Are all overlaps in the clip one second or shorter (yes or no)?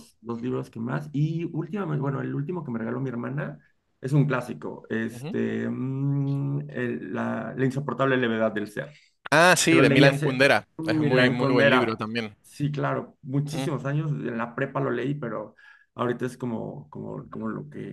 no